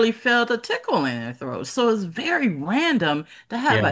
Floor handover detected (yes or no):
no